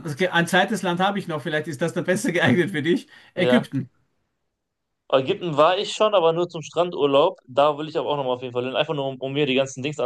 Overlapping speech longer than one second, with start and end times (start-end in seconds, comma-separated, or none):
none